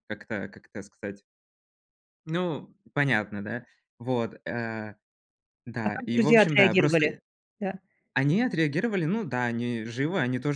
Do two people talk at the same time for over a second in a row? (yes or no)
yes